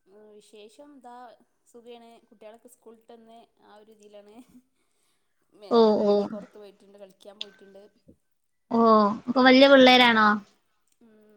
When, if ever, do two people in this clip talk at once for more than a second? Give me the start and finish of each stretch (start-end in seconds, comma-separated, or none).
none